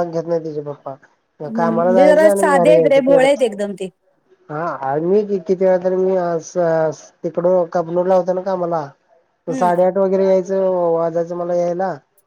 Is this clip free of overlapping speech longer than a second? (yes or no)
no